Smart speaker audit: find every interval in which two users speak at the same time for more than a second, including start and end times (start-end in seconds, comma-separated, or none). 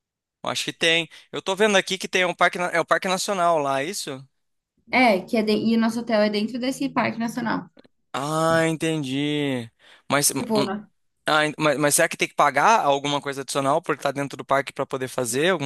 none